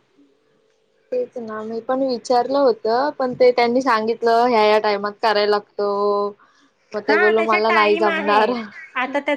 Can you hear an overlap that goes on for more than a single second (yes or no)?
yes